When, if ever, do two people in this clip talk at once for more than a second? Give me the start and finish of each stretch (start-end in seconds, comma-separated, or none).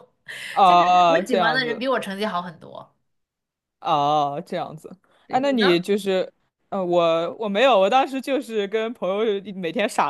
0.6-1.9